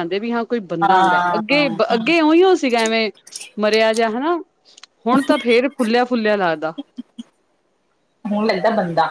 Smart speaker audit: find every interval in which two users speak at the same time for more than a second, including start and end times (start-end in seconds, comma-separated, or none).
0.8-2.1